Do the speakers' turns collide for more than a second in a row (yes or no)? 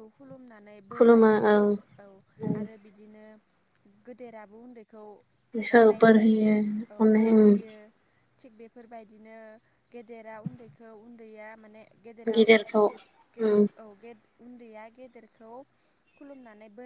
no